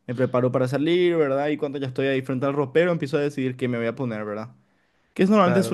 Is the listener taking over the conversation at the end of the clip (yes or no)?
no